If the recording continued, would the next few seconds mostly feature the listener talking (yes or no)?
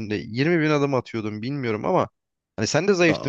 no